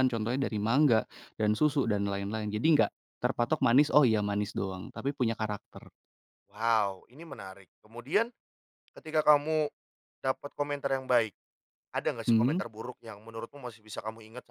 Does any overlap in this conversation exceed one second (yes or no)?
no